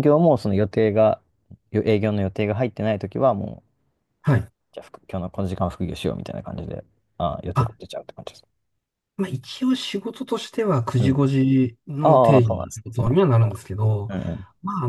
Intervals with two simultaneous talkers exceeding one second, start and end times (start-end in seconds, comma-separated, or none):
12.0-13.3